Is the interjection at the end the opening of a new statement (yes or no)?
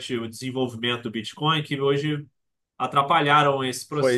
yes